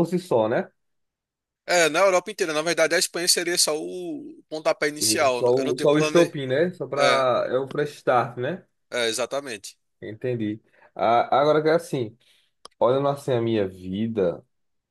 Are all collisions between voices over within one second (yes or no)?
no